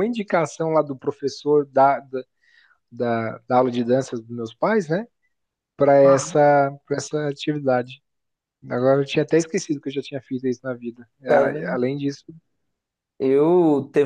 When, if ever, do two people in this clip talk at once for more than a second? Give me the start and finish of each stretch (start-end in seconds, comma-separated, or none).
none